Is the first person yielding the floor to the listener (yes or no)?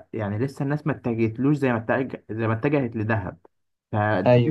no